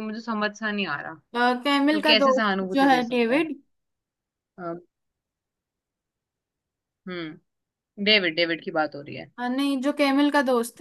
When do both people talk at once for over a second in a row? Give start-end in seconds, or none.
1.9-3.5